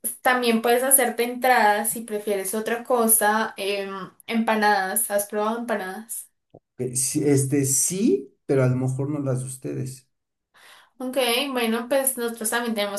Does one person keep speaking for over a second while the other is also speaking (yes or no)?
no